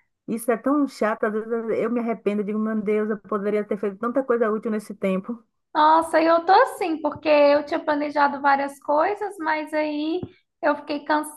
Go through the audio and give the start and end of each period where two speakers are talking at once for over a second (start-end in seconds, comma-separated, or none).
none